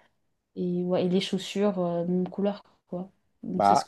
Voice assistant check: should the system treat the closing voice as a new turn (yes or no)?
yes